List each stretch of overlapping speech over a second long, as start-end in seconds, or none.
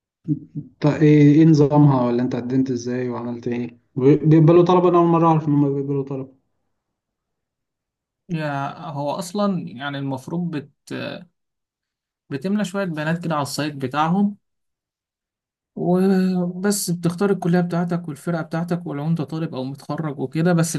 none